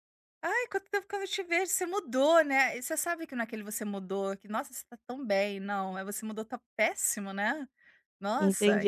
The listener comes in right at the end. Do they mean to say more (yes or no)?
yes